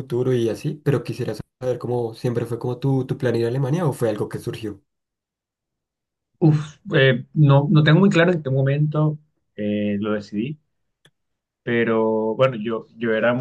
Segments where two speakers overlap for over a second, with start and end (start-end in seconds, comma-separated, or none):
none